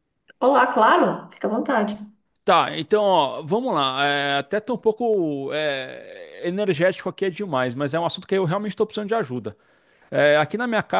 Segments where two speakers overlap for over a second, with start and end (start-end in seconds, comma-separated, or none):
none